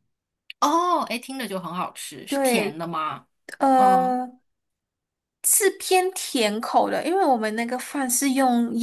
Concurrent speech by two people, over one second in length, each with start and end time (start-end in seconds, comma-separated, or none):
none